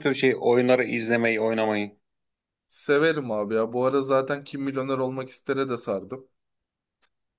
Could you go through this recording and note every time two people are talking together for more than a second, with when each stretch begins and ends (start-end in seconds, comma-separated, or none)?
none